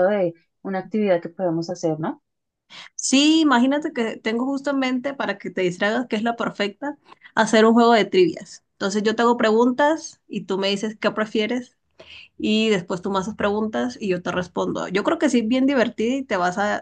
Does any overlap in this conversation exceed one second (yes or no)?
no